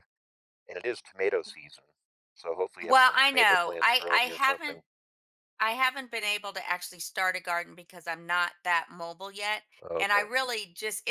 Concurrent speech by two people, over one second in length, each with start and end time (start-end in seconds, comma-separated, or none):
2.9-4.8